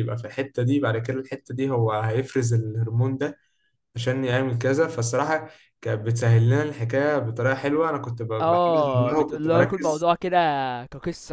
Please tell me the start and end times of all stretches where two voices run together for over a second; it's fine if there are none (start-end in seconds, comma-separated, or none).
8.4-10.1